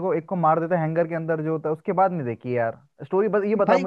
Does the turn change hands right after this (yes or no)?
no